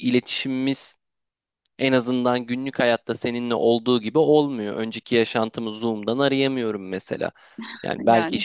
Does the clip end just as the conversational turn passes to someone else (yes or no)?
no